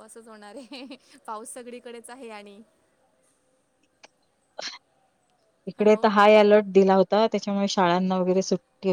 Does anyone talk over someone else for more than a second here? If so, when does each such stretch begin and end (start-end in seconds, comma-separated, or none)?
none